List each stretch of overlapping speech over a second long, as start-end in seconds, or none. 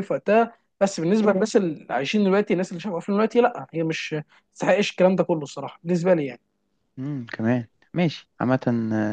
none